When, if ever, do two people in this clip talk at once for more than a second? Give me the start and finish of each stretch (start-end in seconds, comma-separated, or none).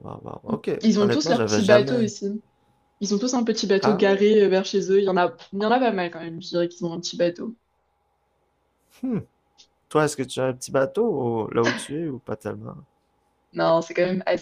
0.8-2.0